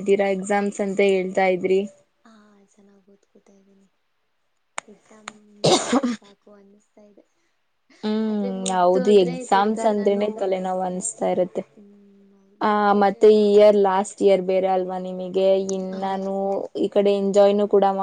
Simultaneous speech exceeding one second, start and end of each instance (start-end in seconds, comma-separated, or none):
8.3-10.2